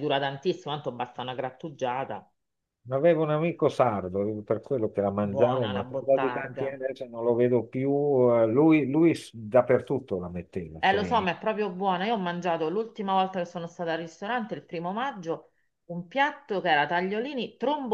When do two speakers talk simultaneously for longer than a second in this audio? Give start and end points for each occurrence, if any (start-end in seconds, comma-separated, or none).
5.3-6.8